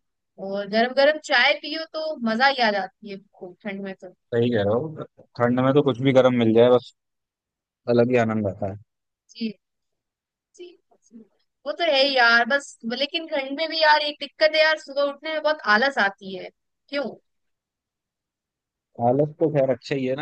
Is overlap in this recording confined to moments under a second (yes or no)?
yes